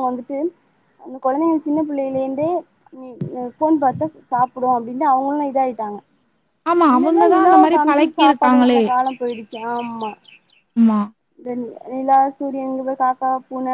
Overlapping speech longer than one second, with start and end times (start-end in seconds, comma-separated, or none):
6.9-8.8